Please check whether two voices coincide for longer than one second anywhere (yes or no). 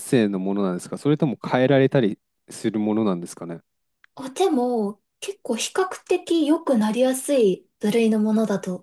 no